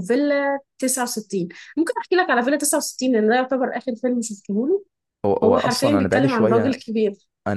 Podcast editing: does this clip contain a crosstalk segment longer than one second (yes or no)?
yes